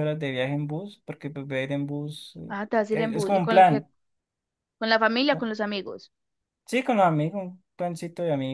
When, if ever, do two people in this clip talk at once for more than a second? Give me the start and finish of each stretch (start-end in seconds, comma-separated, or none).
2.5-3.8